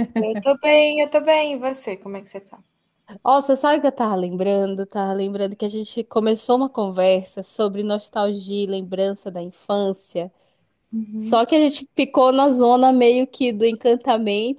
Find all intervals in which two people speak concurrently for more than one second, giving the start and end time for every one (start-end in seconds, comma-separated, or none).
none